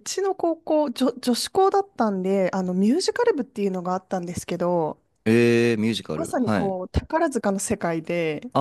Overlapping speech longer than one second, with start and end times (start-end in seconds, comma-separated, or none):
none